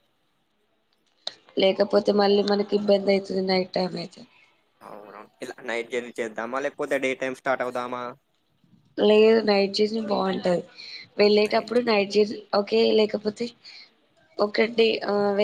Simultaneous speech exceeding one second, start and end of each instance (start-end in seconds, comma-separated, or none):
none